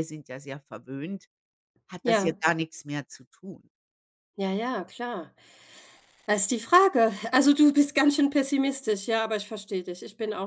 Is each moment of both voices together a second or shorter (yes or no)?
yes